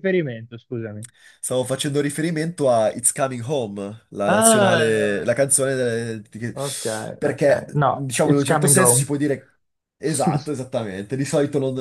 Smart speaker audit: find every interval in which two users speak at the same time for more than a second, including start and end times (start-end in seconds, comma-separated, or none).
4.3-5.7, 7.2-9.1